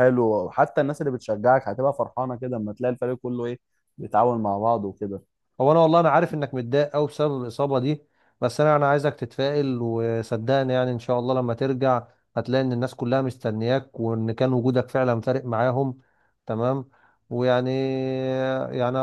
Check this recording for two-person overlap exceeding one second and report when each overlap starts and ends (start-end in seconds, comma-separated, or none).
none